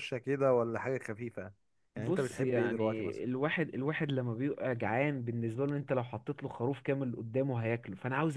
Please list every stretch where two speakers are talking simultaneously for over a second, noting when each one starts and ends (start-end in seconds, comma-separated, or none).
2.0-3.2